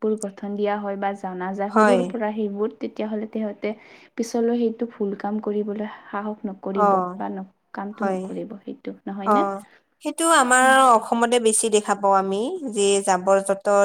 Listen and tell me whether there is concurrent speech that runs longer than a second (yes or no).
no